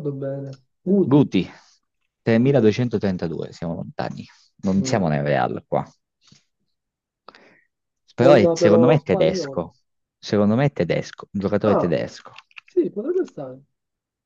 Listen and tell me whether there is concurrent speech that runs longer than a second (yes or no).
yes